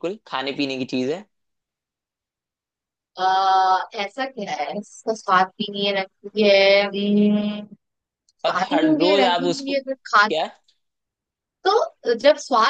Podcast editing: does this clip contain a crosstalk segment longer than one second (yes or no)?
yes